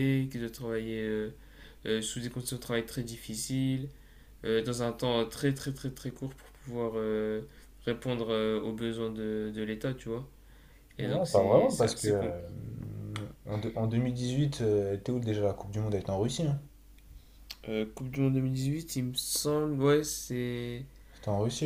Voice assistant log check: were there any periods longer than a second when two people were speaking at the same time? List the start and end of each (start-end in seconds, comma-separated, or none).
11.0-12.3